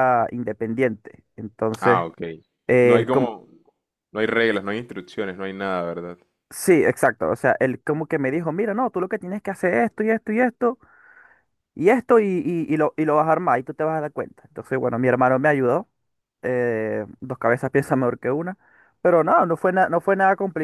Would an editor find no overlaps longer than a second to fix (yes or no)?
yes